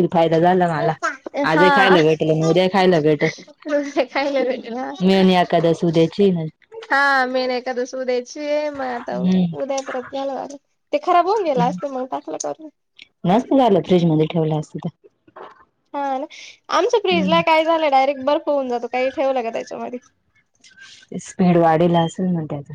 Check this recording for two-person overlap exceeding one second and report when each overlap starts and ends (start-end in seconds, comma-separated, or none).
none